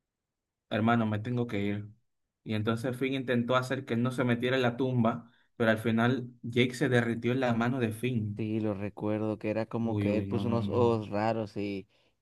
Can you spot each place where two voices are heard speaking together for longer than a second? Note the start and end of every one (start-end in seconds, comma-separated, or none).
9.8-11.0